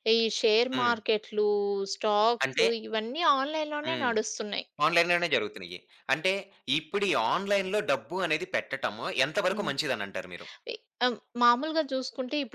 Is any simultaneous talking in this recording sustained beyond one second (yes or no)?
no